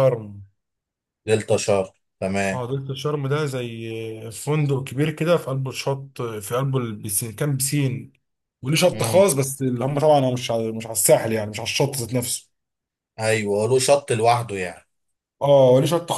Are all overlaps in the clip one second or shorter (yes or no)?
yes